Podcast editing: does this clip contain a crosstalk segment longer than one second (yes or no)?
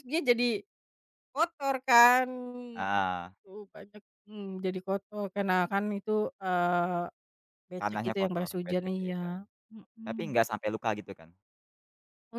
yes